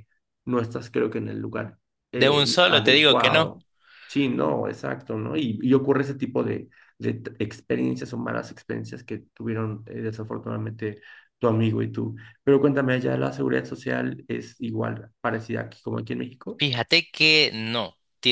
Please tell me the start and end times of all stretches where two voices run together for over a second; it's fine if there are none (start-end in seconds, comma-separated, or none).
2.2-3.5